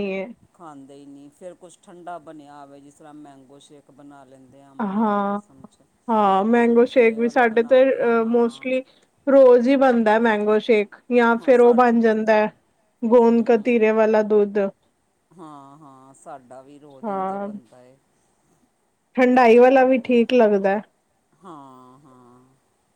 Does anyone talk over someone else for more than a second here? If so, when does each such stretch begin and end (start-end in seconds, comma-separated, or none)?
6.6-8.7